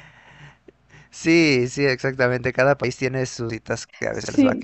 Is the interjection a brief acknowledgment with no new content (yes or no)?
no